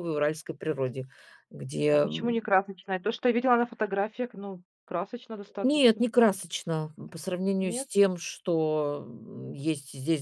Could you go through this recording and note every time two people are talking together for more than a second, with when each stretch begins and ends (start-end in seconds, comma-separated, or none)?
none